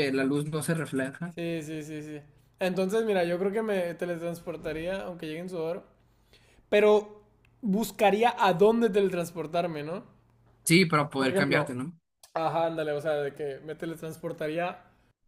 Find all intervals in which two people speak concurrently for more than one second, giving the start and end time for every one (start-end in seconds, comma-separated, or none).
none